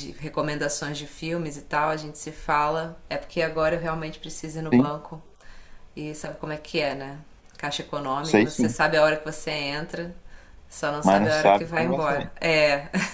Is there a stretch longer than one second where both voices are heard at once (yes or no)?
yes